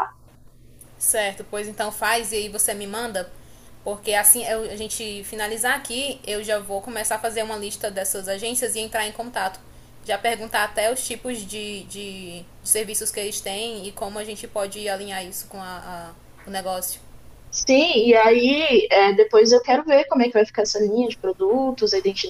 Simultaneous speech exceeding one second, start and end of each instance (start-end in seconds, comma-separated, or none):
none